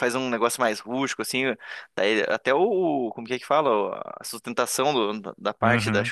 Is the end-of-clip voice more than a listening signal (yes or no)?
no